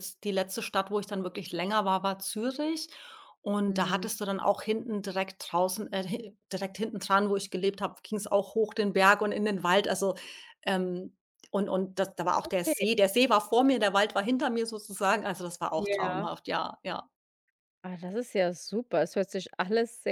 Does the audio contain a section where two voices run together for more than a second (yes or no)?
no